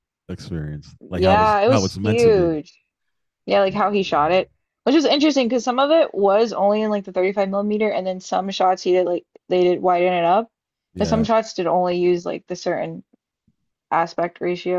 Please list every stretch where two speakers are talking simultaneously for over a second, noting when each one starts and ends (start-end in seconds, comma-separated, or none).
1.1-2.5